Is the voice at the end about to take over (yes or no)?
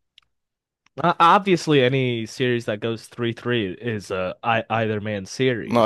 yes